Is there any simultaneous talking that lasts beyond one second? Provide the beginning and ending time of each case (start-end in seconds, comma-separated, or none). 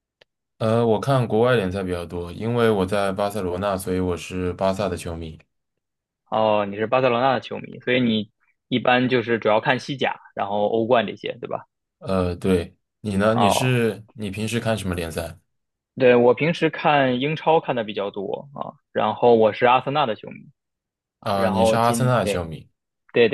21.2-22.5